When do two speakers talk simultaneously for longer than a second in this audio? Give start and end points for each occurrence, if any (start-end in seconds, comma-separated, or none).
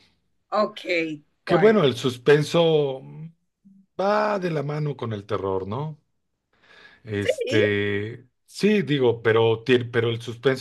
none